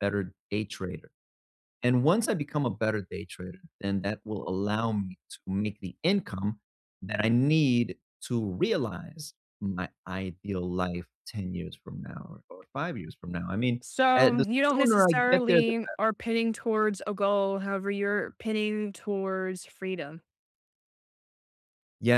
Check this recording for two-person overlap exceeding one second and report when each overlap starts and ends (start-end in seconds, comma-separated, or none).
13.8-15.7